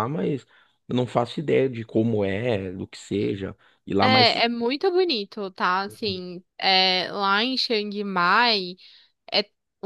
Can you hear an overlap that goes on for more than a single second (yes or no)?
no